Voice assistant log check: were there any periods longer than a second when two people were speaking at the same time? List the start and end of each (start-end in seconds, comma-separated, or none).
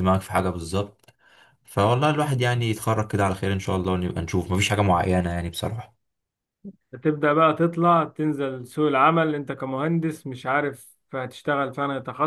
none